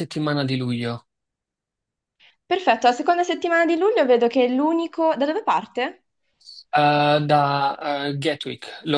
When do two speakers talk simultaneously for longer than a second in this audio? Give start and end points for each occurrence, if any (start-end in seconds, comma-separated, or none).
none